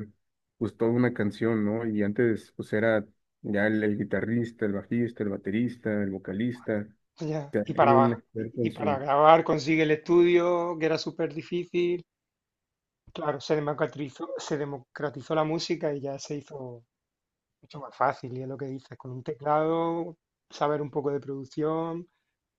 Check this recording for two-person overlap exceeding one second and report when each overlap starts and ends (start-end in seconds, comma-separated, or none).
7.5-9.0